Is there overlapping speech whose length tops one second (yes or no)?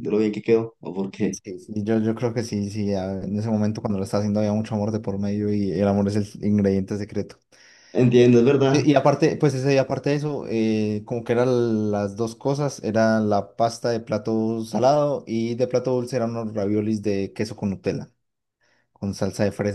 no